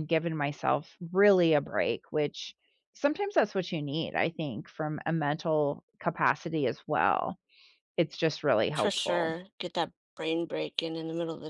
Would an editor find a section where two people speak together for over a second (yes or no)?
no